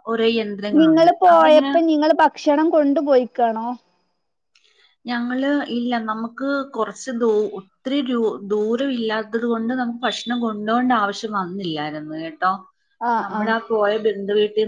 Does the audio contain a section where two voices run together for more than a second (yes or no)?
no